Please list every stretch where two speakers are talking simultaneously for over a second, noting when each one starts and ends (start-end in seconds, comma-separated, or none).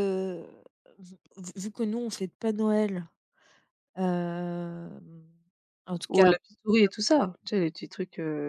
none